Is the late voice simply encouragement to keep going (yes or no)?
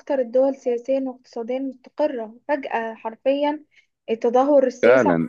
no